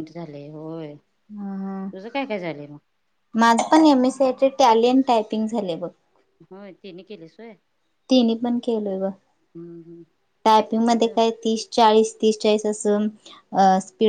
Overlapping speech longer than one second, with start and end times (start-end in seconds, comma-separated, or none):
none